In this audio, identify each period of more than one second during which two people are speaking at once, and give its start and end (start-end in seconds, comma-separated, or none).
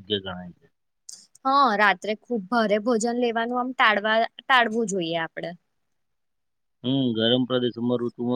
none